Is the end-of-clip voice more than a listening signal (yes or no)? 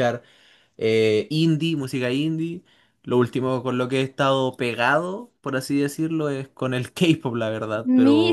yes